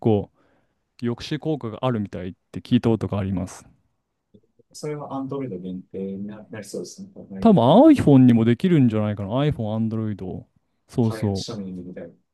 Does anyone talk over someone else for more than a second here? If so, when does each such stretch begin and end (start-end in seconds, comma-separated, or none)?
none